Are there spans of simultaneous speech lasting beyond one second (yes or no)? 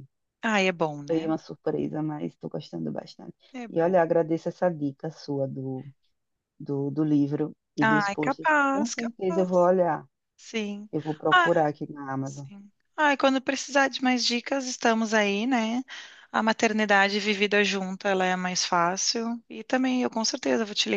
yes